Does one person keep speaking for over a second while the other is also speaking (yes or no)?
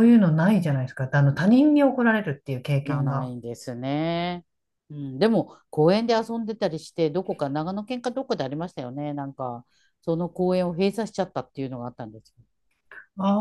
no